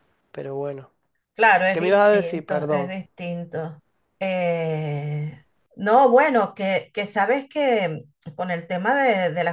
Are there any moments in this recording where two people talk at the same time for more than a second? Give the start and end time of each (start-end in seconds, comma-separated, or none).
1.7-2.9